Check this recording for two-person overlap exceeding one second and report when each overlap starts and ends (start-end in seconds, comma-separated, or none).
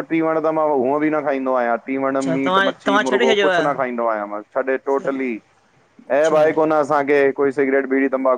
2.1-4.0